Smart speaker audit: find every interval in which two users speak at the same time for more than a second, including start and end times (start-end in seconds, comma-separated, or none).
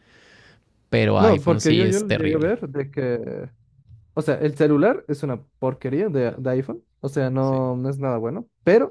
1.2-2.6